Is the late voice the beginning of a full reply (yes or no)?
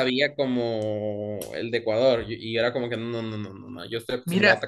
yes